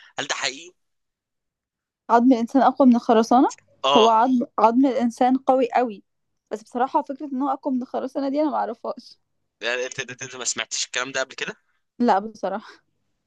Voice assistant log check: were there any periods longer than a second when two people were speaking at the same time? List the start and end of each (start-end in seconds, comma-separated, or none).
none